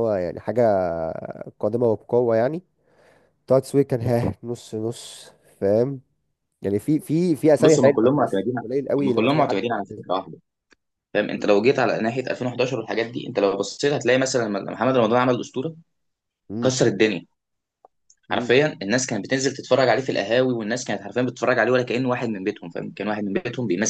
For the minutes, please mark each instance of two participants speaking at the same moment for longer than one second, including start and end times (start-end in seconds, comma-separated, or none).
7.6-10.0